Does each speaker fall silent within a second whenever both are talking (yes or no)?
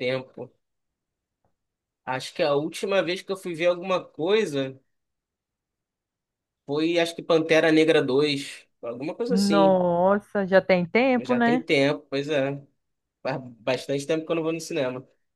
yes